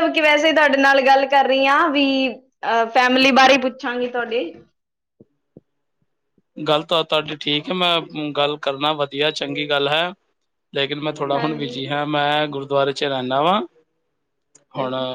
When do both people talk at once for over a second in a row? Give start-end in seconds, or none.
none